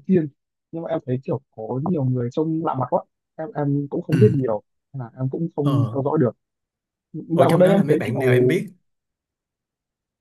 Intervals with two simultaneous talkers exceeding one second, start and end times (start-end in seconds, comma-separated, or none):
7.3-8.6